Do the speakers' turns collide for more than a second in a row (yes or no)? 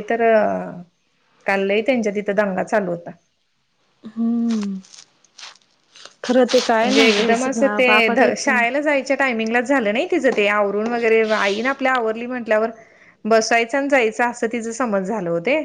yes